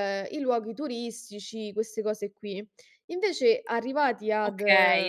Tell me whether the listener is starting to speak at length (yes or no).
yes